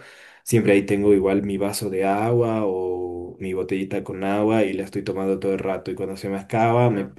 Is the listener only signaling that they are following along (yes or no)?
yes